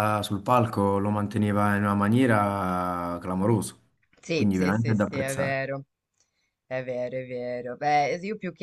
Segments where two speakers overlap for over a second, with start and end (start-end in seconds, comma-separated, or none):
4.3-5.6